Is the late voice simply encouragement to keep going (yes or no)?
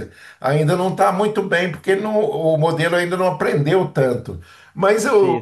yes